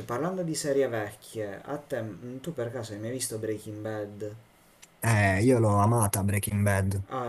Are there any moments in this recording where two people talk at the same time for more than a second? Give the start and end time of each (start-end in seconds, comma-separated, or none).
none